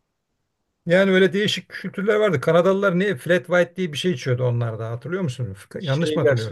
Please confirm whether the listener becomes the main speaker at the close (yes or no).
yes